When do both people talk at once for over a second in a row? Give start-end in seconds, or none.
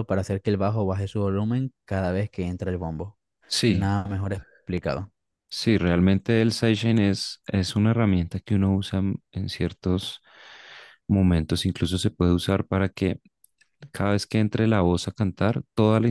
none